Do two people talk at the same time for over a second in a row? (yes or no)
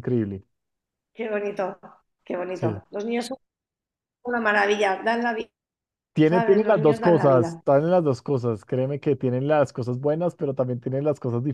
yes